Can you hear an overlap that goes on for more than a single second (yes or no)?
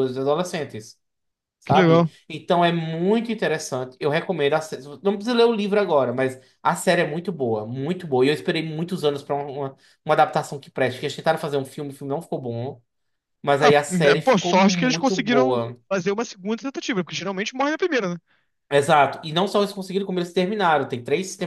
yes